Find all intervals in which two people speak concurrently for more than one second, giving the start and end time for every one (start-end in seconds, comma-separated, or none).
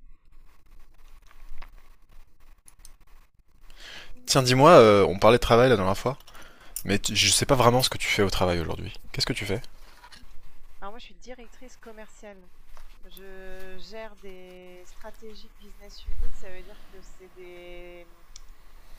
none